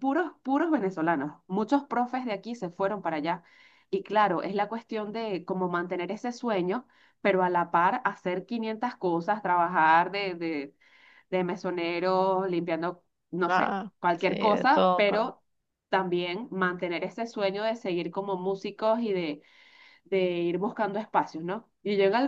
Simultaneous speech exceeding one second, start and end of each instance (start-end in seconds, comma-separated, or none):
13.4-15.2